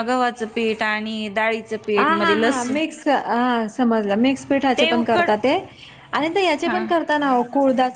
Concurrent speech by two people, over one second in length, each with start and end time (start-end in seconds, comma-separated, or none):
none